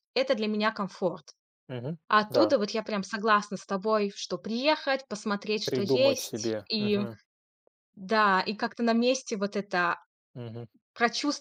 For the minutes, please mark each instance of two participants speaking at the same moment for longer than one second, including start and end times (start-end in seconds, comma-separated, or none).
5.7-7.0